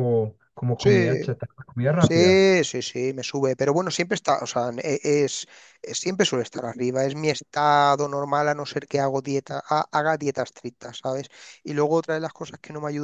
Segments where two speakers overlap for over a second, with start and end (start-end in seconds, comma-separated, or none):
none